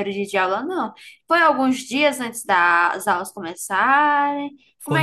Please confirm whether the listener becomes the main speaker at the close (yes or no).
yes